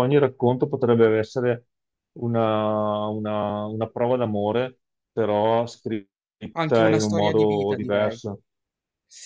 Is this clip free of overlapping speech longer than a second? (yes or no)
no